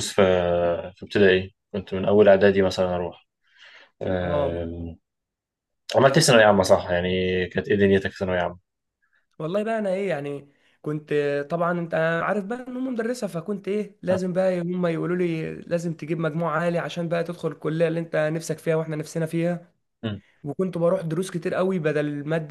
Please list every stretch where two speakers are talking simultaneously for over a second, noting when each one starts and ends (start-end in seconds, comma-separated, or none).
none